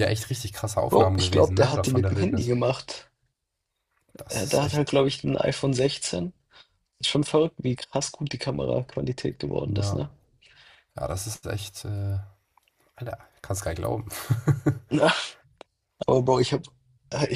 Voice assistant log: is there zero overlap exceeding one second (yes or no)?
no